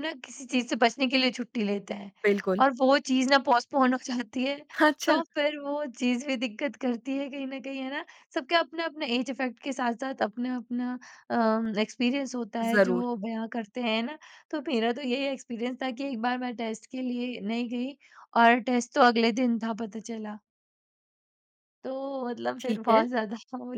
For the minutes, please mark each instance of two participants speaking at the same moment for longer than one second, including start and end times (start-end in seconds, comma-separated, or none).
none